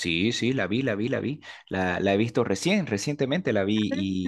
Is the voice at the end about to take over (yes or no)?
no